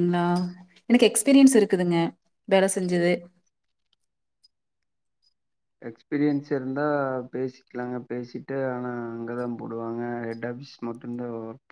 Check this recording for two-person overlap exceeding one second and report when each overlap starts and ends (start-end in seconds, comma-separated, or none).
none